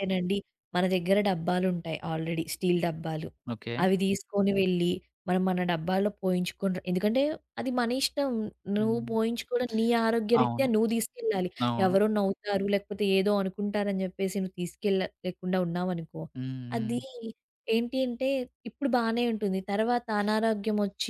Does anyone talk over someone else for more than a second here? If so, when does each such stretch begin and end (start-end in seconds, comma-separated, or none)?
none